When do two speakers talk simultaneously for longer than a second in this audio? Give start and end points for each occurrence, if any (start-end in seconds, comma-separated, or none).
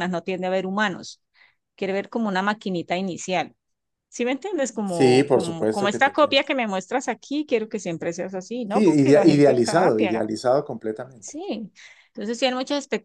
4.8-6.4, 8.7-10.3